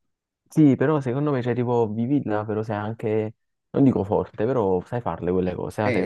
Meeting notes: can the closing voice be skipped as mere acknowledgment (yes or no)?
no